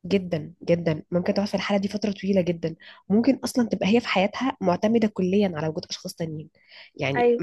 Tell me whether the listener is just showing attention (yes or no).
yes